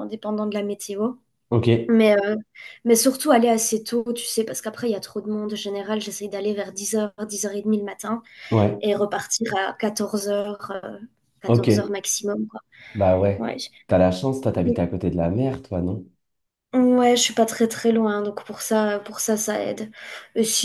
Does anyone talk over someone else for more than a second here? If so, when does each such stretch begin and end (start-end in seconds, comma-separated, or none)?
none